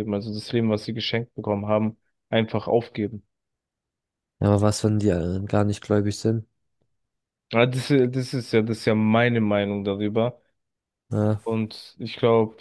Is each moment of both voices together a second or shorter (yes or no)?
yes